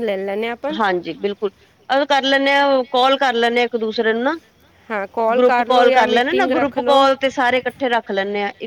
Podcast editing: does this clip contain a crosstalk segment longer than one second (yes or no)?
yes